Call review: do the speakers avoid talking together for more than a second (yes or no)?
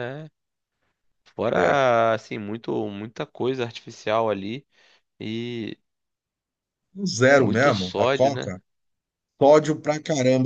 no